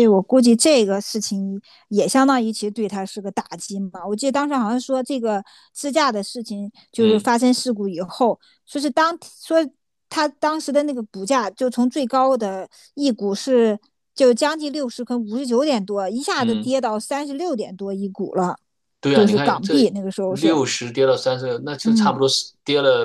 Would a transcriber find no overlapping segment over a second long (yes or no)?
no